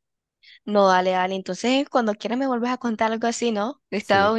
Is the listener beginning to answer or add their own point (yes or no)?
yes